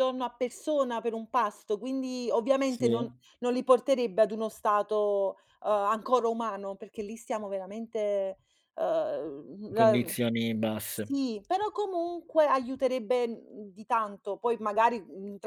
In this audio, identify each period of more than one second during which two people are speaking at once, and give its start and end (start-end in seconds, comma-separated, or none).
none